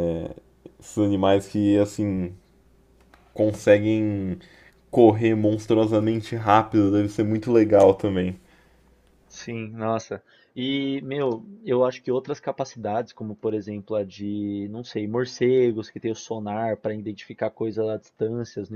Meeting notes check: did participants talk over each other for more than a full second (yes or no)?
no